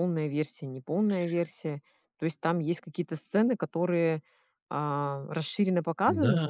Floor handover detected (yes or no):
yes